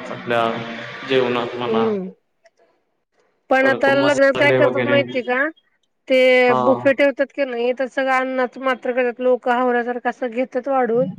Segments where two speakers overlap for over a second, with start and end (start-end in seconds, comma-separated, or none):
3.6-5.0